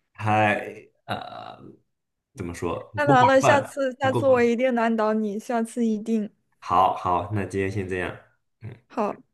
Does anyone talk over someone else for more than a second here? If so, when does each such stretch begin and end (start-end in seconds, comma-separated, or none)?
3.0-4.5